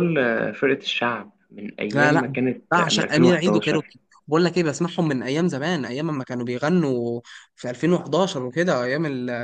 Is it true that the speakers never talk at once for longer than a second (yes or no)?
no